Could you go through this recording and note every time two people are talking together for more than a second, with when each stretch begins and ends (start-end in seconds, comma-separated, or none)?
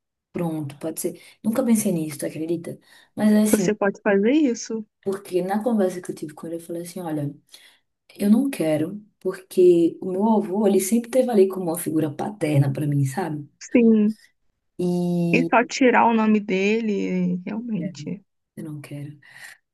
none